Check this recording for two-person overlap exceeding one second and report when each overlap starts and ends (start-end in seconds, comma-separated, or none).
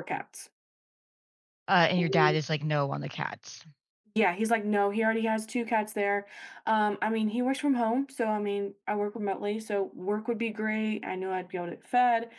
none